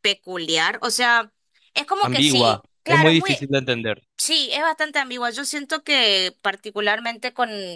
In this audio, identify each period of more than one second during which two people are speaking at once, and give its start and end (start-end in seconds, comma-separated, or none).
2.0-3.5